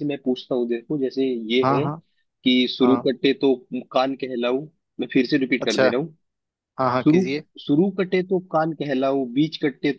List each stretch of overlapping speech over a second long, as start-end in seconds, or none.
none